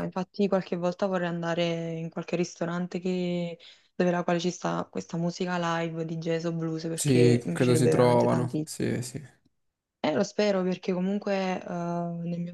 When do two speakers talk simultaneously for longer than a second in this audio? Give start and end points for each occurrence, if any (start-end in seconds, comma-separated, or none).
6.9-8.7